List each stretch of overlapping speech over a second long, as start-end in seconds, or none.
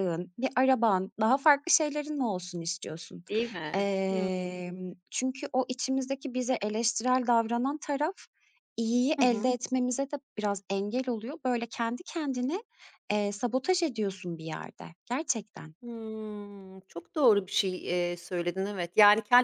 none